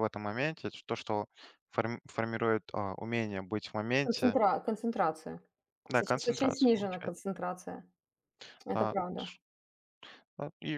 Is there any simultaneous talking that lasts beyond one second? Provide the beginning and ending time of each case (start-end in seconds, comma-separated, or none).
5.9-7.1